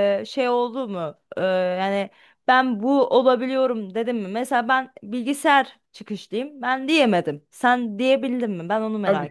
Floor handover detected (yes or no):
yes